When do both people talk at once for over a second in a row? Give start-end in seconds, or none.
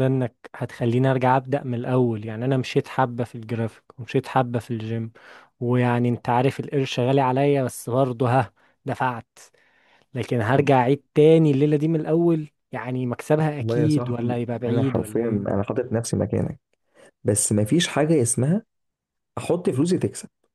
13.6-15.6